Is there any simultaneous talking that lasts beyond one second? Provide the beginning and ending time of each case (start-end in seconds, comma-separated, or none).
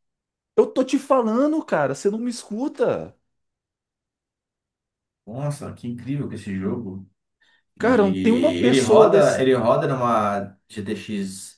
7.8-9.5